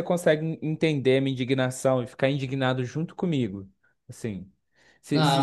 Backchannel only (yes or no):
no